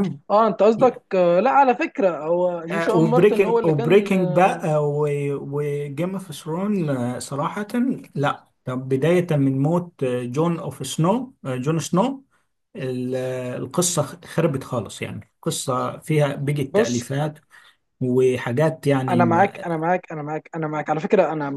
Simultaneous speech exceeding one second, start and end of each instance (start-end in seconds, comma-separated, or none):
2.7-4.7